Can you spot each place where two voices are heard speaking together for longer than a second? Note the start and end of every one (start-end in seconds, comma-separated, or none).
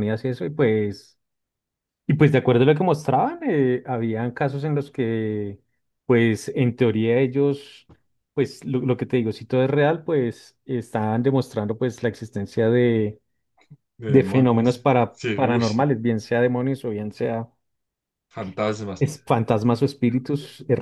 14.1-15.8